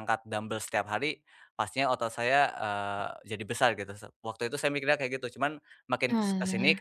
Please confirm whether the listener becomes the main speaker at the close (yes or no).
no